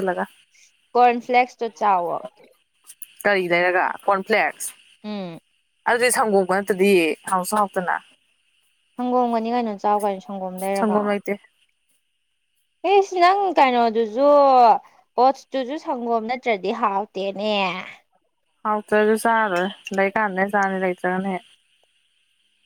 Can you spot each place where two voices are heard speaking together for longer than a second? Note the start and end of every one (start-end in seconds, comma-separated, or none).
none